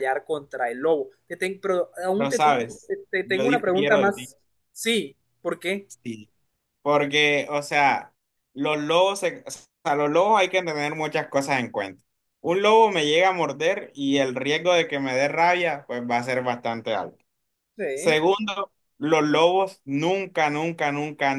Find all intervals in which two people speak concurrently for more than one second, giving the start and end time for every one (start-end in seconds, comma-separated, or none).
2.1-4.3